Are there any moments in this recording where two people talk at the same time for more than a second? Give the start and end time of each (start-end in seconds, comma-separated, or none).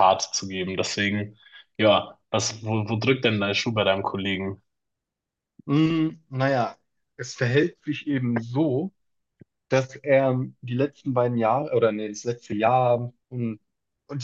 none